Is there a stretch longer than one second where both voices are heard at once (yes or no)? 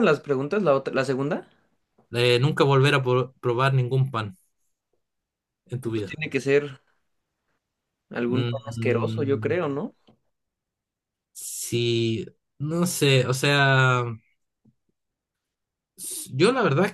yes